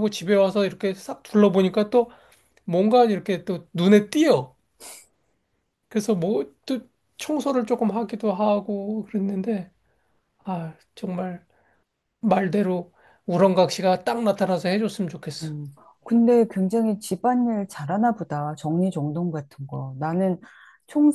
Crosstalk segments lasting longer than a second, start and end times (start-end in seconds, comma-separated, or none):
none